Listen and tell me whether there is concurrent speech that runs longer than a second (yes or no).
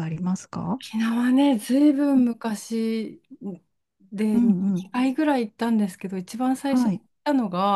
no